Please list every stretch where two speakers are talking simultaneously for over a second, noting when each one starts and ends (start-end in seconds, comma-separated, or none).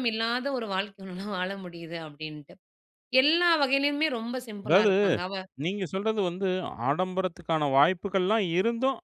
none